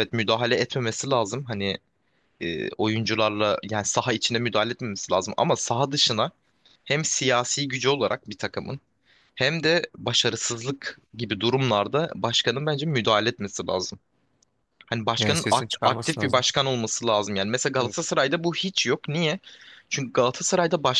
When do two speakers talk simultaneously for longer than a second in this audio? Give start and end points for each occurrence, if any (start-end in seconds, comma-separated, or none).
15.2-16.4